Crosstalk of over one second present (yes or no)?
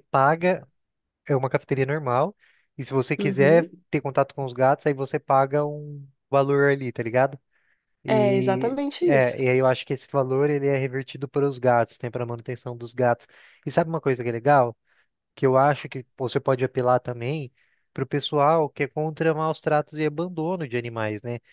yes